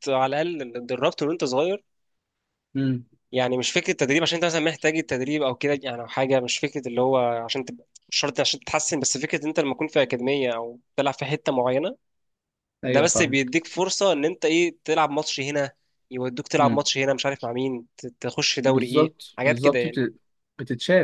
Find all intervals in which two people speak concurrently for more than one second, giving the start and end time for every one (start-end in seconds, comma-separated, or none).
18.7-20.0